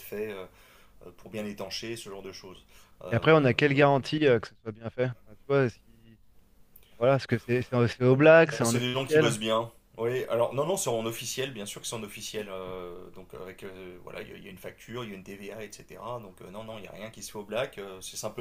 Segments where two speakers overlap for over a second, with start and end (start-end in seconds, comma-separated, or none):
8.1-9.4